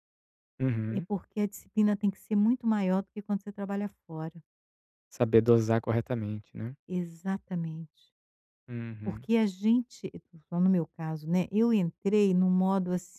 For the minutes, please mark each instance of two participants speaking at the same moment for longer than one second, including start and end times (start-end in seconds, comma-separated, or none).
none